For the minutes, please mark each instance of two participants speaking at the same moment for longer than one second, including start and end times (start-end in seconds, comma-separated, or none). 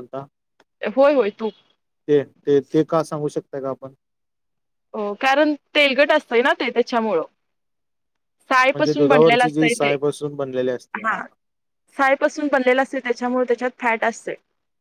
8.7-9.9